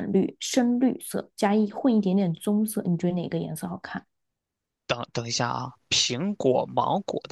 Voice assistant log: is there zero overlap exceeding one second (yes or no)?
yes